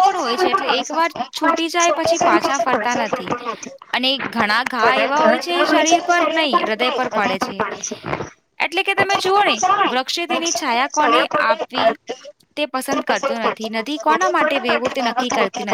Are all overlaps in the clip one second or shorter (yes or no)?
no